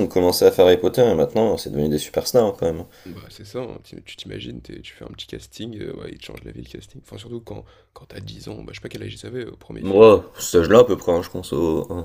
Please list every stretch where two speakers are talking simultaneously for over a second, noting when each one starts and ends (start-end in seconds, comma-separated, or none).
none